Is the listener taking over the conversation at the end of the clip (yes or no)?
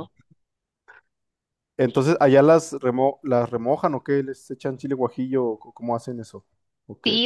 yes